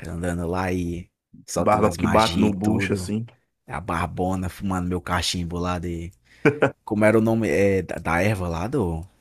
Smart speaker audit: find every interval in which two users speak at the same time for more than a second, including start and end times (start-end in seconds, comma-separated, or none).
1.6-3.1